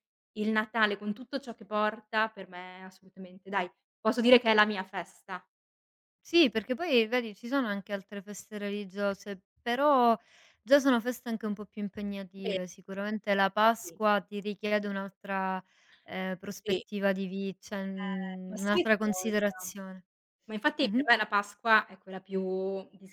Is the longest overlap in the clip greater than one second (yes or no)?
yes